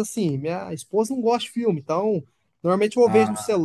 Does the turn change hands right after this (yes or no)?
no